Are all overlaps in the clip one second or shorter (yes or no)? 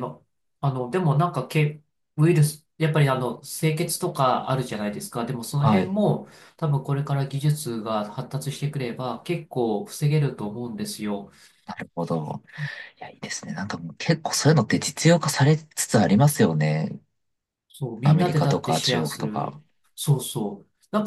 no